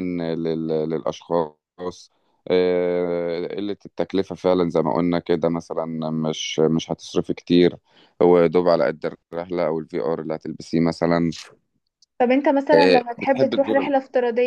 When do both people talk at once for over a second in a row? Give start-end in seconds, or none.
12.7-13.9